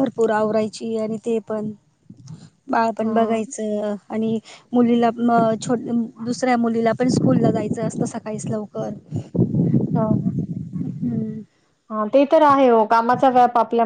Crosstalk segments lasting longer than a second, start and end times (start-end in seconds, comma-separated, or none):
none